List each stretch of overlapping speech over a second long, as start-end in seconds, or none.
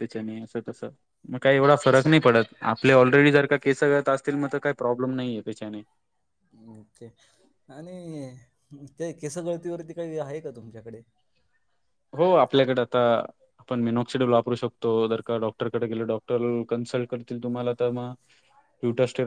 none